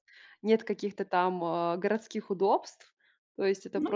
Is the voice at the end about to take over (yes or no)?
no